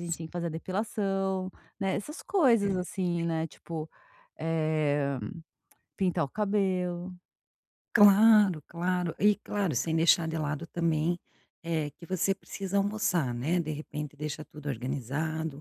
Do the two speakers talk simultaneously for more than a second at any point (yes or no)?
no